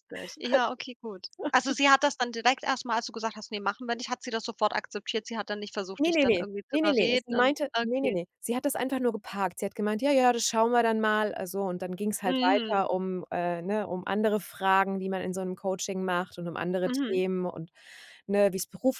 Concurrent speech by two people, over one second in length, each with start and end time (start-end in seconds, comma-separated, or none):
6.0-8.2